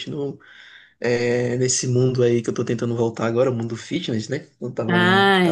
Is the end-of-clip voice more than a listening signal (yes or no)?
yes